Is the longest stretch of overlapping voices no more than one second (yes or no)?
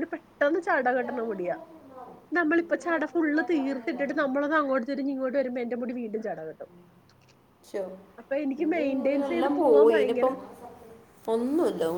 no